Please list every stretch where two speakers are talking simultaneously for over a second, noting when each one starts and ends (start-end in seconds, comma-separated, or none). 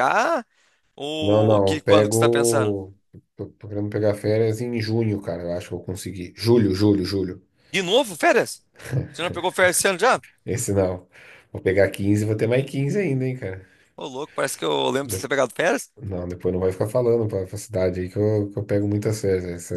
1.2-2.8